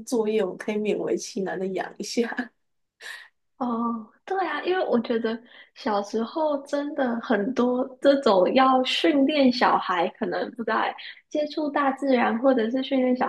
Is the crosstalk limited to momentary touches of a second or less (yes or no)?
yes